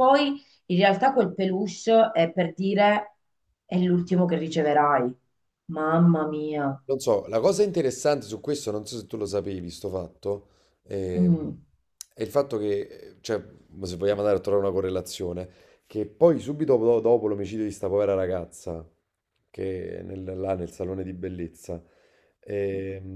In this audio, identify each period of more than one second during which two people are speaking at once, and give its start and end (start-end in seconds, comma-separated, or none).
none